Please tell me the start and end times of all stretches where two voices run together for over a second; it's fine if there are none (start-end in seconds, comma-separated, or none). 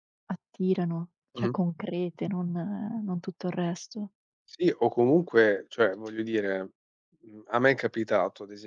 none